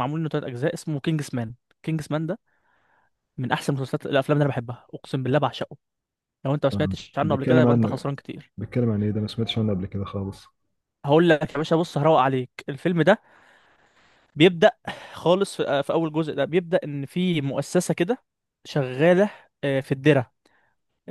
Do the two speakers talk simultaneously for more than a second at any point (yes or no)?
yes